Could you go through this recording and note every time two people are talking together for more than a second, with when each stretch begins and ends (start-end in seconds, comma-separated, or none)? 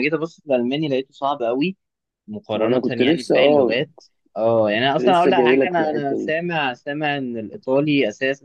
2.5-3.8, 5.0-6.3